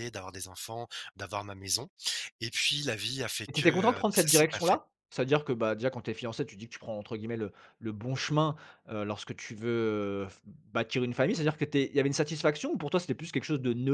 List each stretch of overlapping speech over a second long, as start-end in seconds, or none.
3.5-4.8